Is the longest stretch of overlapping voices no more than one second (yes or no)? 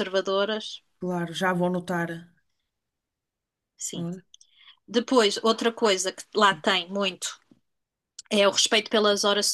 yes